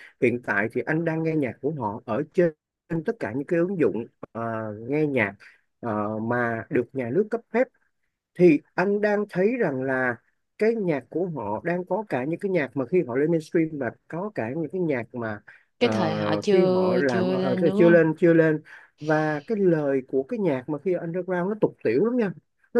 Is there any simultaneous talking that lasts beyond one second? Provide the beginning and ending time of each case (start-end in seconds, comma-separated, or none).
16.5-18.1